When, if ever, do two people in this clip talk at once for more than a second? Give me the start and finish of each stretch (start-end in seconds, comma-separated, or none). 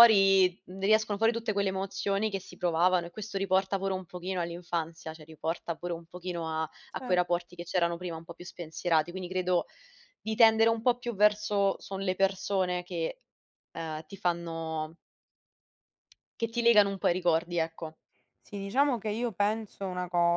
none